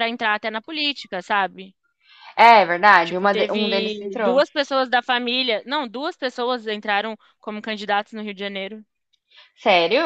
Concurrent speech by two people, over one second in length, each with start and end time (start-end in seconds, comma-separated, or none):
3.0-4.4